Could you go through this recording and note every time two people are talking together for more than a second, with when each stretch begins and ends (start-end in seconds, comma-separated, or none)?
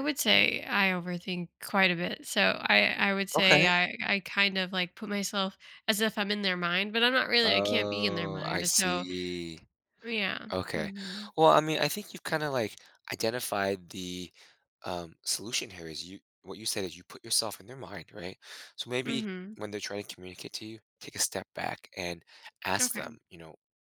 7.4-9.1